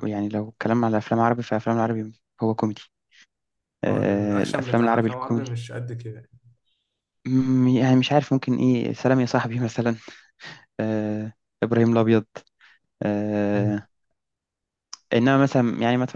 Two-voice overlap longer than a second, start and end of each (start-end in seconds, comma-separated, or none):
3.9-5.6